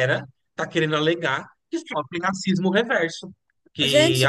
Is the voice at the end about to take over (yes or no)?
no